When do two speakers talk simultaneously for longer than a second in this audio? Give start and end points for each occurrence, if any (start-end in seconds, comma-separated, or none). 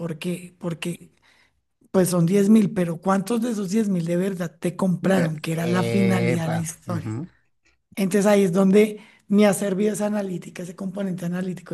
5.0-7.2